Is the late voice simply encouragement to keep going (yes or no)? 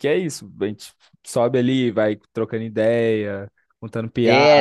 no